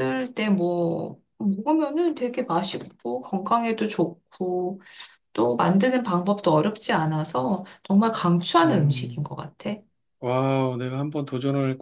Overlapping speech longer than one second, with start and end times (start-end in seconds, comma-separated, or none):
none